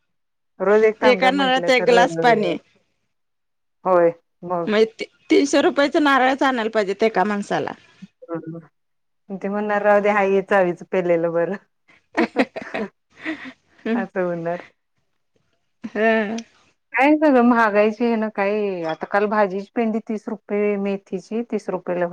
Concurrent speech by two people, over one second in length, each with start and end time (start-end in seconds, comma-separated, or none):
1.1-2.5